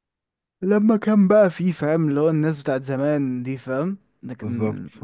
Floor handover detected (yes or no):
yes